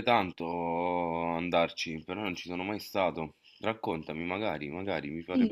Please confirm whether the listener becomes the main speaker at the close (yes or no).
yes